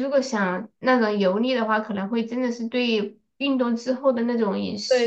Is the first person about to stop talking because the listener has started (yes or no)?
yes